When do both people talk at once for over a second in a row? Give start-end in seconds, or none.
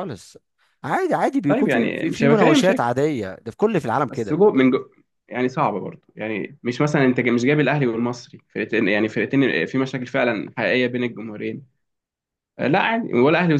1.5-2.9